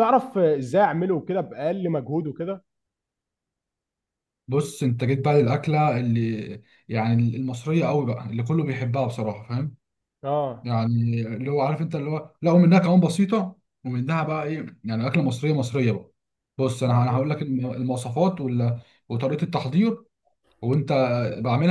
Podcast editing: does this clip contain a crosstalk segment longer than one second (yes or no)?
no